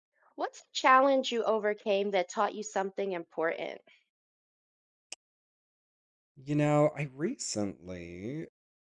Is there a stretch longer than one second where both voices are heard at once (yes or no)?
no